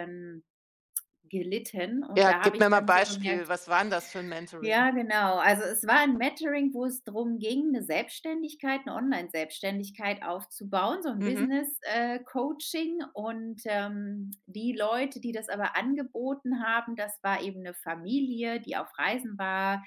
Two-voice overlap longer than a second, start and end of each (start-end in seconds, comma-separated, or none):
2.2-3.5